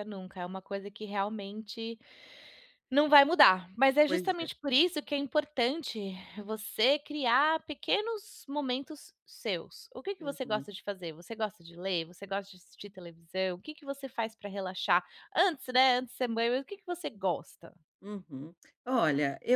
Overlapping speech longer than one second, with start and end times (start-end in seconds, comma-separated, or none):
none